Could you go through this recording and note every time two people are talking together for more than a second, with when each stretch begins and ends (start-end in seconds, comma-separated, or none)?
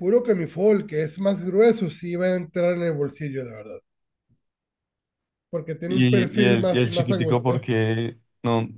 5.9-7.7